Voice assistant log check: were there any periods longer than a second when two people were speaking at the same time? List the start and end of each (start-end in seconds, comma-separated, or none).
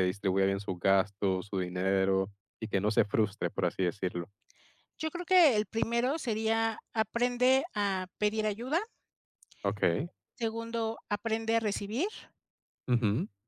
none